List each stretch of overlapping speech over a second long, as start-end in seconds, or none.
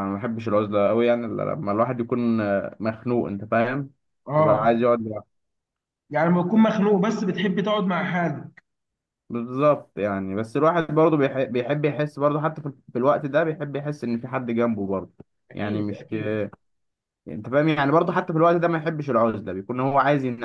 none